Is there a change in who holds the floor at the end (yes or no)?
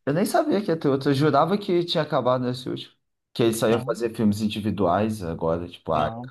yes